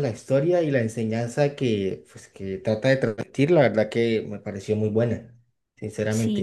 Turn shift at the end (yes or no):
yes